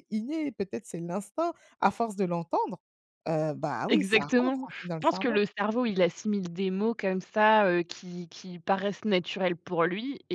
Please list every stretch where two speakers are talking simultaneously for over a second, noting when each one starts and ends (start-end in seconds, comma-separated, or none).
3.9-5.4